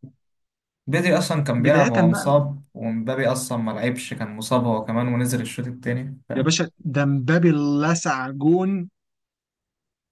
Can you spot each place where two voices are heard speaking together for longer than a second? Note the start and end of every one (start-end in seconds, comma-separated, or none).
none